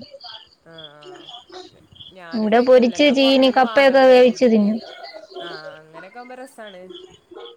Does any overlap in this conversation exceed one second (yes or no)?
yes